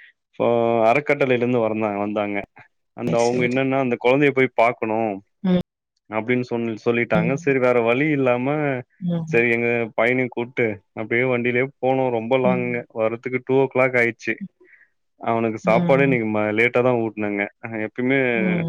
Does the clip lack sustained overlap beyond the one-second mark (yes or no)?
yes